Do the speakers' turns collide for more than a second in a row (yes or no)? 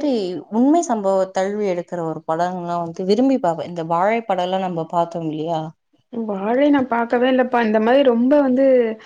no